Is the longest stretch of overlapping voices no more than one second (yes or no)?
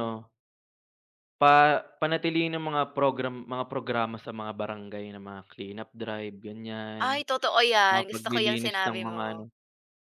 no